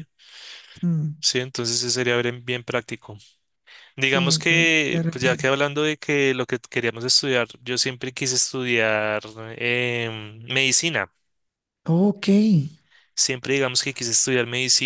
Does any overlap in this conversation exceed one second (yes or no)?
yes